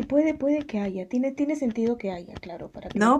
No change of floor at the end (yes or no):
no